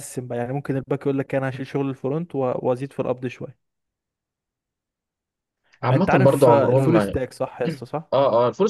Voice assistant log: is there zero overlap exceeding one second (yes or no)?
no